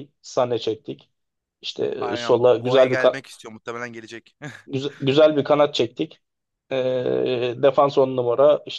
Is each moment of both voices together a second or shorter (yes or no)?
no